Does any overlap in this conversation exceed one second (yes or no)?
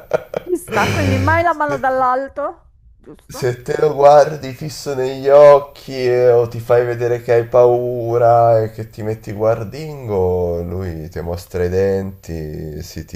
no